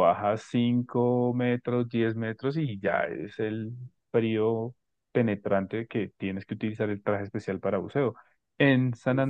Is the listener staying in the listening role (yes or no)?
yes